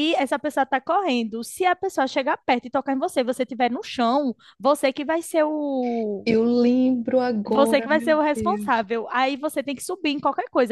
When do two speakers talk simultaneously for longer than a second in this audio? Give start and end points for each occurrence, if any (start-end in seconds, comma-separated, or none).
7.5-8.8